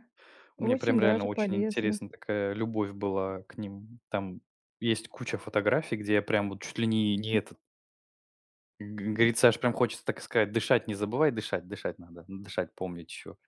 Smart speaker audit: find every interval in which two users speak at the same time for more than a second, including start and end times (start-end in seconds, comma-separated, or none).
0.6-2.0